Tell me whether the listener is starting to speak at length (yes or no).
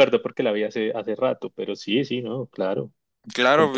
yes